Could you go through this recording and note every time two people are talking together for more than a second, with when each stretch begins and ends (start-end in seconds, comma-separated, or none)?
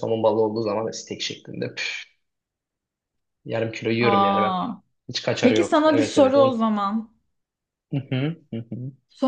5.4-6.6